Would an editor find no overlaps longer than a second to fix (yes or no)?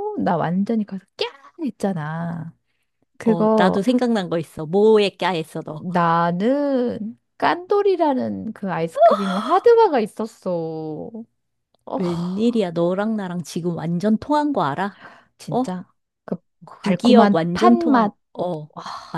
no